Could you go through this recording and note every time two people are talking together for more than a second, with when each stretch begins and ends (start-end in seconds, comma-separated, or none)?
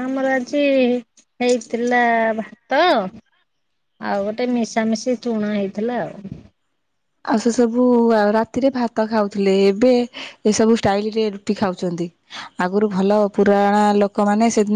none